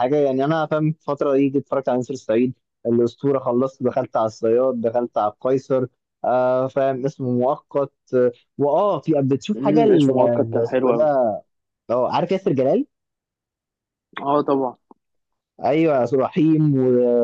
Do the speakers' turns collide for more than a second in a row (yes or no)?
yes